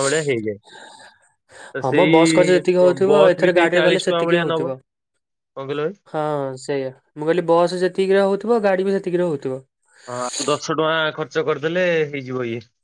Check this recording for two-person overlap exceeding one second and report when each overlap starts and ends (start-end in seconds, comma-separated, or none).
1.8-4.7